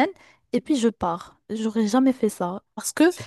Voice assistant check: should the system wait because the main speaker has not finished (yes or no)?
yes